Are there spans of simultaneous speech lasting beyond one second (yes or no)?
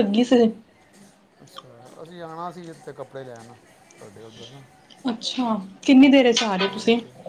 no